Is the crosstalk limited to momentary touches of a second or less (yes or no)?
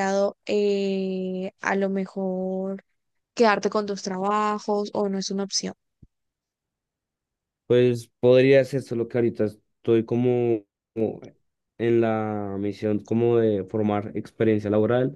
yes